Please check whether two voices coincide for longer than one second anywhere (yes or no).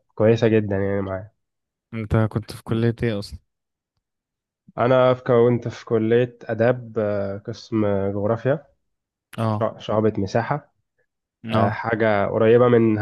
no